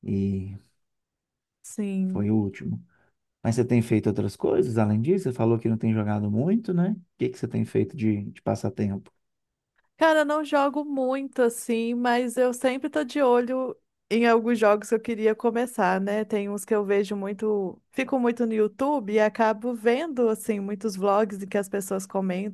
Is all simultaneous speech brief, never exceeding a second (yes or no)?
yes